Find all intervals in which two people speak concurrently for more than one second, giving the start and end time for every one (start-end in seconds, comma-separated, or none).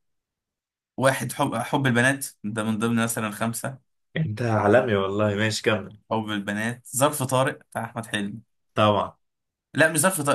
none